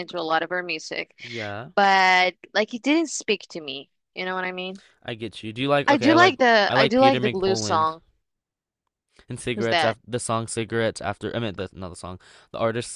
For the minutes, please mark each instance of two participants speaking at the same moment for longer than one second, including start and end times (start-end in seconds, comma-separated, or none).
5.9-7.9